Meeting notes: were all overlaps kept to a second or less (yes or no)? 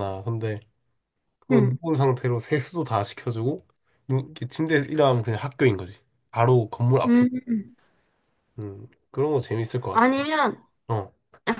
yes